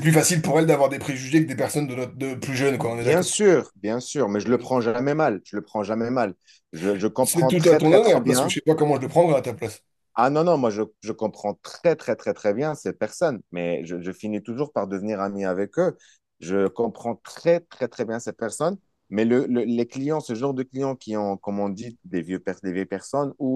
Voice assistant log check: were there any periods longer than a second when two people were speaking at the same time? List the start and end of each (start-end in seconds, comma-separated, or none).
7.2-8.6